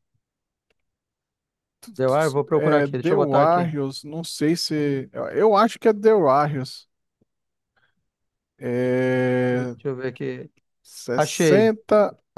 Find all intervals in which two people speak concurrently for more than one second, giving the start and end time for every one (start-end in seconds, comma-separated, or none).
2.5-3.7